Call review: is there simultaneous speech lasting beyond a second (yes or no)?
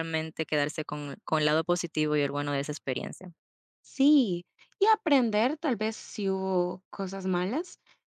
no